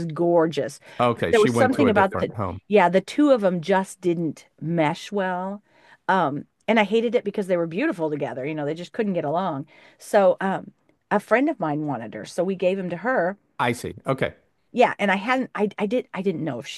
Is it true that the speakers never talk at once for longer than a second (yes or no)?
no